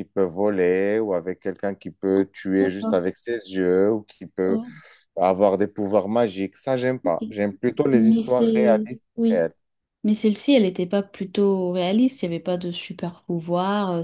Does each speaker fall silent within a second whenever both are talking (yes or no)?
no